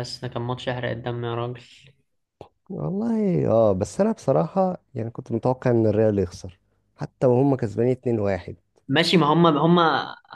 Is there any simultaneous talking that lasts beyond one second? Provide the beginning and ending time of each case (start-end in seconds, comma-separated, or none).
none